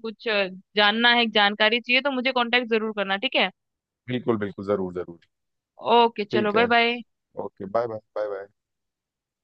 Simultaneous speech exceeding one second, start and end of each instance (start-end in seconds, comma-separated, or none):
none